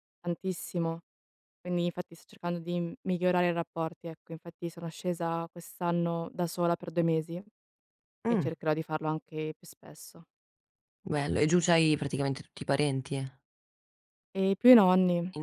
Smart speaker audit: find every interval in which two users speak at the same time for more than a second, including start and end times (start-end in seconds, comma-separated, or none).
none